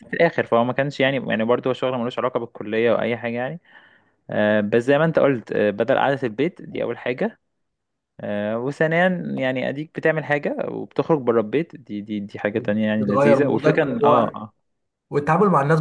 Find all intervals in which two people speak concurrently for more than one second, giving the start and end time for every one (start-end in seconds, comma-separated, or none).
13.0-14.2